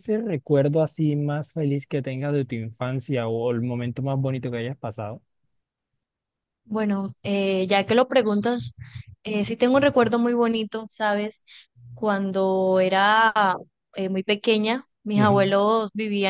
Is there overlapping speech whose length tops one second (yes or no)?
no